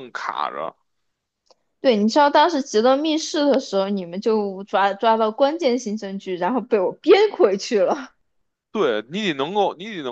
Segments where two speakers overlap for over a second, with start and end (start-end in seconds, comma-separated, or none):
none